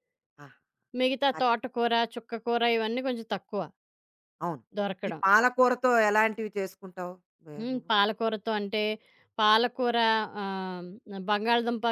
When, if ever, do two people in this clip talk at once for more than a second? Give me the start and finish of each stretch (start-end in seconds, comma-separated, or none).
none